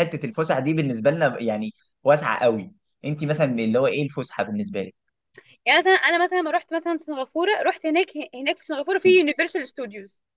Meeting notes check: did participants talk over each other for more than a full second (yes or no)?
no